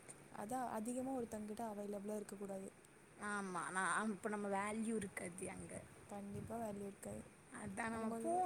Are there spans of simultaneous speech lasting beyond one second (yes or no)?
no